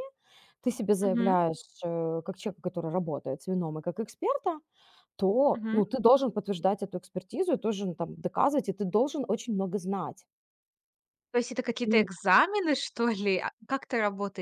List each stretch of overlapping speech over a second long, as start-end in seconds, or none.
none